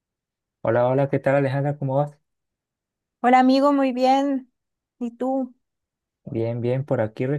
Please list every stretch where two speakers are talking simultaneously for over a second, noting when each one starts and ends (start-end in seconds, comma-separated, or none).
none